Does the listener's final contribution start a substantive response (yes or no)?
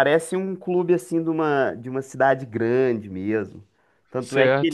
no